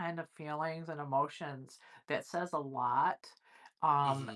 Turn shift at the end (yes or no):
no